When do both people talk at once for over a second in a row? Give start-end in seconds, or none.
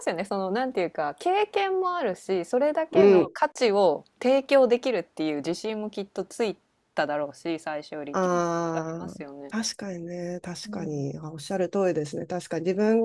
8.1-9.5